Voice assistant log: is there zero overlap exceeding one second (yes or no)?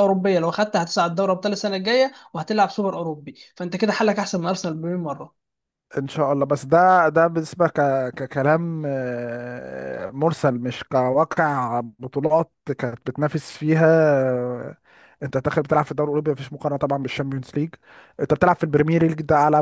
yes